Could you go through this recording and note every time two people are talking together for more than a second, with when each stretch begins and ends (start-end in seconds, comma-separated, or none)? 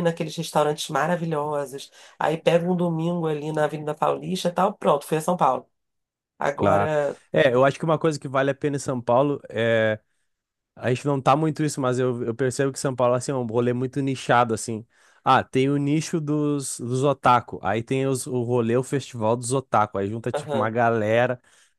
none